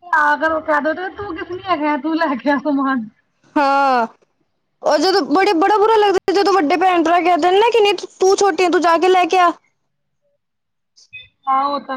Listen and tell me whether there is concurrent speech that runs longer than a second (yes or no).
no